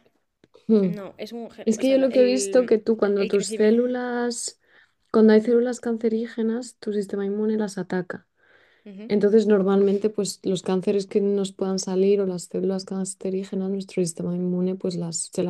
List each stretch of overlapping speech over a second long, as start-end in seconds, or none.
1.6-3.8